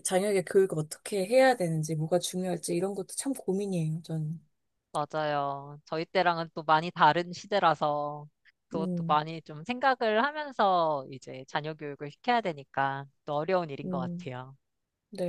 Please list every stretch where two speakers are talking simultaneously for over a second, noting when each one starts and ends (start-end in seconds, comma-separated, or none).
none